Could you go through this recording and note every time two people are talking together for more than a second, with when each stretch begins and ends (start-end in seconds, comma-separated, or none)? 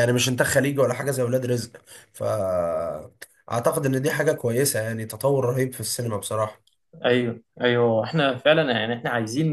none